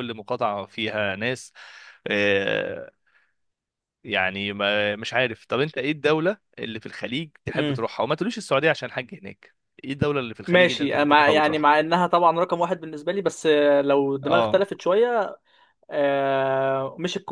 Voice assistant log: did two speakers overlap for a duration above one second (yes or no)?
yes